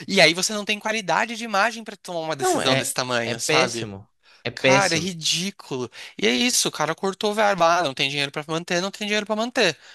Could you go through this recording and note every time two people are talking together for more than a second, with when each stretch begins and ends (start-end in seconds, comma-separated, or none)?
2.4-3.9